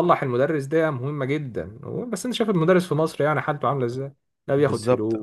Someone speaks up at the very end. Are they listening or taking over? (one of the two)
taking over